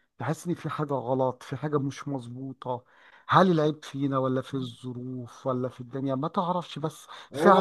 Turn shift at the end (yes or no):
yes